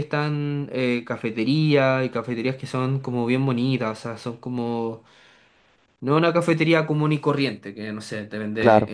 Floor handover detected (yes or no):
no